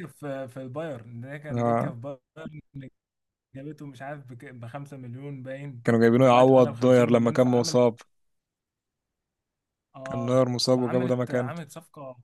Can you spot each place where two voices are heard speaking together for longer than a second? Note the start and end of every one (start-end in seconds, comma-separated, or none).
6.2-7.8, 10.0-11.5